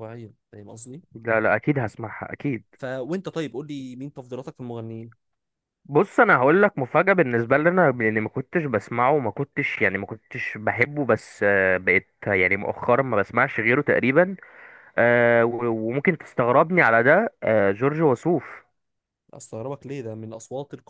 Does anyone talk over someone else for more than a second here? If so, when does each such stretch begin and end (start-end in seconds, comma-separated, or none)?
none